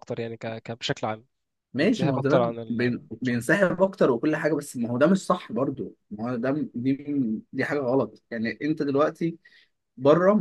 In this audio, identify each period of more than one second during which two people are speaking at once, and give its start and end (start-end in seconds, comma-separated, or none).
1.8-3.4